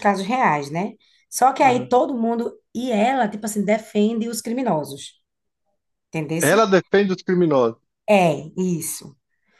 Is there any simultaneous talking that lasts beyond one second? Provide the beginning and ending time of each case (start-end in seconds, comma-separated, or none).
none